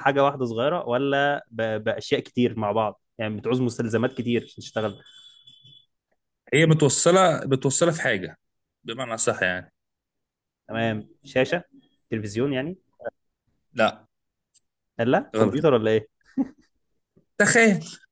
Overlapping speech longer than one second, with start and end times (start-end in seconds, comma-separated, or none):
none